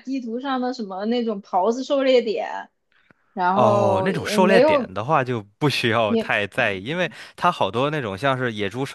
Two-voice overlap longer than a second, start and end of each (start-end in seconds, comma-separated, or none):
3.5-4.9